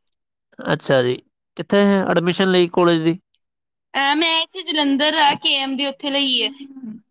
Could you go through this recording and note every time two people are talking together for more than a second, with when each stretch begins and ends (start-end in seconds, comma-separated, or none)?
none